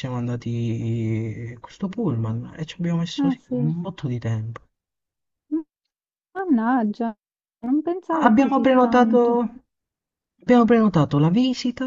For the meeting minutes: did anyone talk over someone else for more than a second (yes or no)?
yes